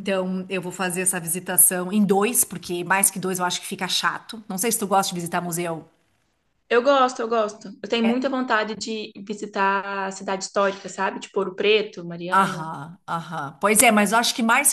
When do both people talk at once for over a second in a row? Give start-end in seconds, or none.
none